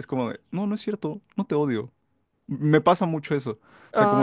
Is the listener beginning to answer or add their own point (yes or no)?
no